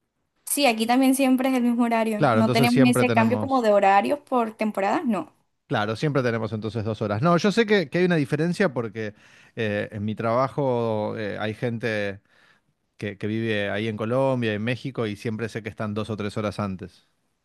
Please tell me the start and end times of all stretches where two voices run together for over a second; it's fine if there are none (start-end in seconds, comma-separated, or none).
2.2-3.7